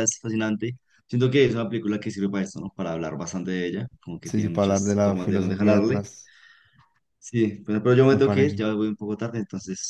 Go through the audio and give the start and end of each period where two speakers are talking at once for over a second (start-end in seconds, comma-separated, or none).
4.2-6.0